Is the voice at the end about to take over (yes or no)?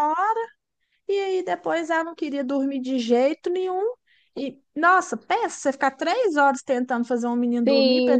yes